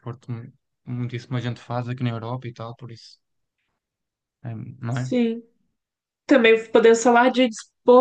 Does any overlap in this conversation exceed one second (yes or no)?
no